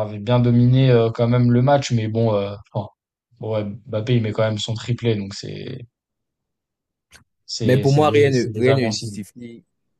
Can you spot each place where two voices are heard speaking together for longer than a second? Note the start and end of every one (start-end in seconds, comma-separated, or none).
7.6-9.2